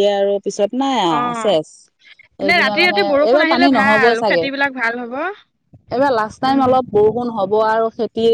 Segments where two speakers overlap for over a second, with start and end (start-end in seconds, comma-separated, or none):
2.5-4.5